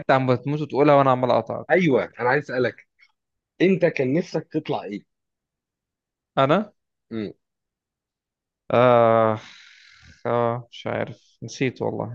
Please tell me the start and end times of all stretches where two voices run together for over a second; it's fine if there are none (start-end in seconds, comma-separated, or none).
none